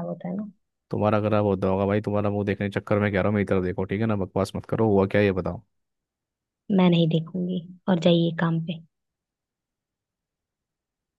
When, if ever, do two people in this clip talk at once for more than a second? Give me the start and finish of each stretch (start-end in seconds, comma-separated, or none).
none